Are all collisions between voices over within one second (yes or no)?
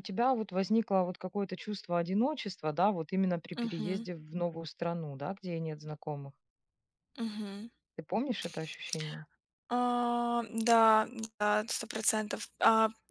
yes